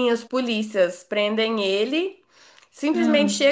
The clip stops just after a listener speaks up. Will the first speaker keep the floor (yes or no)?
yes